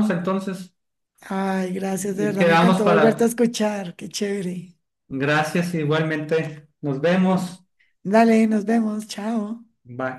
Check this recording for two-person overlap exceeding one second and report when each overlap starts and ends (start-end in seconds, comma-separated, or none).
1.9-3.3